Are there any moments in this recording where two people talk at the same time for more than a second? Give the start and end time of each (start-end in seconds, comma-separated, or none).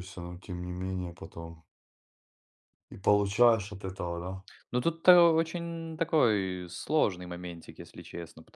none